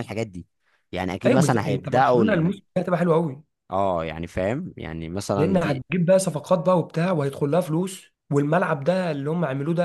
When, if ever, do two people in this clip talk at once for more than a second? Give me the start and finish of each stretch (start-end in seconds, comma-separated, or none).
1.3-2.5